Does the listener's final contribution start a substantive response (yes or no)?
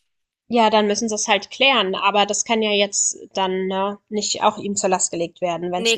yes